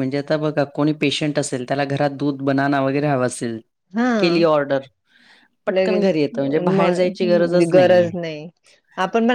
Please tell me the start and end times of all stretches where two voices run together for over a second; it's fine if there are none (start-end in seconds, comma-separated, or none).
5.8-8.1